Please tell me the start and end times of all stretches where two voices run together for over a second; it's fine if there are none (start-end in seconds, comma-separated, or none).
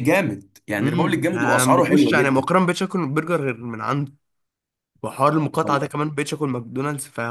0.8-2.5